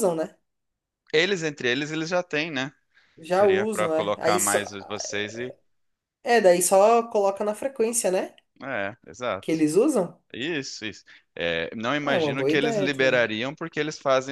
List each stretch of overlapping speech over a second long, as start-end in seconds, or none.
3.3-4.6, 12.0-13.3